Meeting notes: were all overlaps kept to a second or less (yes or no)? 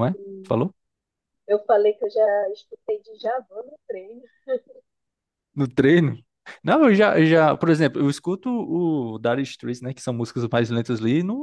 yes